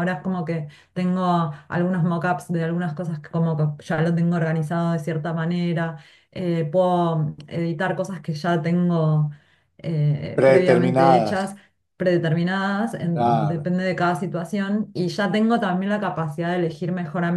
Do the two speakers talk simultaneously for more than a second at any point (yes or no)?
yes